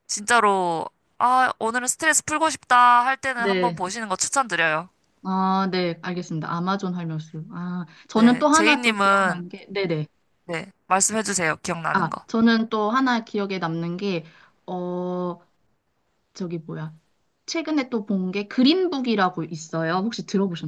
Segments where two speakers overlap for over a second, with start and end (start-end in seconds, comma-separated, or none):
8.1-9.4